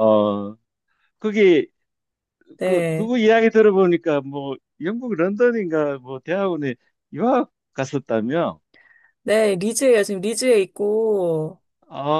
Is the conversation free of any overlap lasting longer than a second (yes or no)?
yes